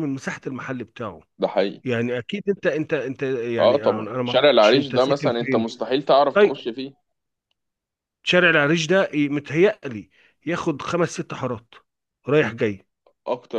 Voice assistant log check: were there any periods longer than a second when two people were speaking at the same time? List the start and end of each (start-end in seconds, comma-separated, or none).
3.6-5.7